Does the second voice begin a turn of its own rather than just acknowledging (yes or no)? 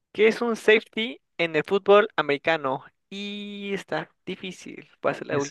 yes